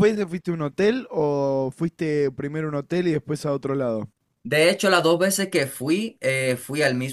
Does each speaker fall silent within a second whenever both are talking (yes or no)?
yes